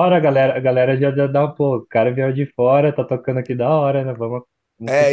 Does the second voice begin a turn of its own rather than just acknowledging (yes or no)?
yes